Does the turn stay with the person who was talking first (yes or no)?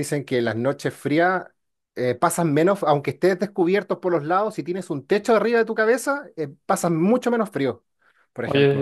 no